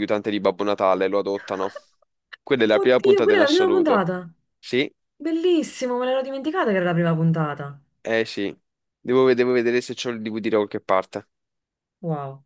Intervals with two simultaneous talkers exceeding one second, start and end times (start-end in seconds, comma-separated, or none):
2.7-4.1